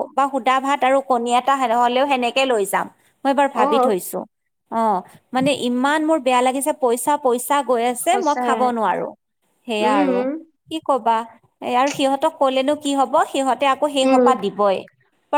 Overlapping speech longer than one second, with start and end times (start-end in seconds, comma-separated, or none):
none